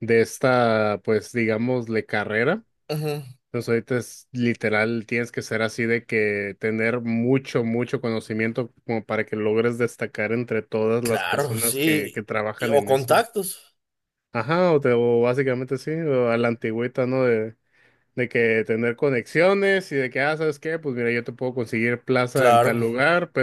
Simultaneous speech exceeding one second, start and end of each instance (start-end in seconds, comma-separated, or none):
11.0-13.2